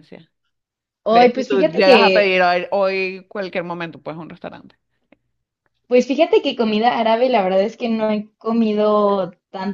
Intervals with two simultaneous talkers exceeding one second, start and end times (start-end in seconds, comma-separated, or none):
1.1-2.4